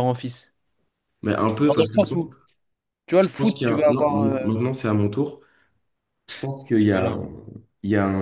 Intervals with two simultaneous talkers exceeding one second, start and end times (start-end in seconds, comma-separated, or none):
3.2-4.5